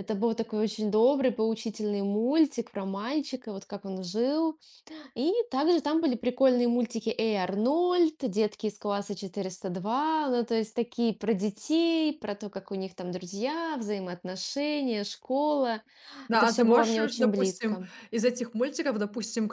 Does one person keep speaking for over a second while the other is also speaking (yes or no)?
yes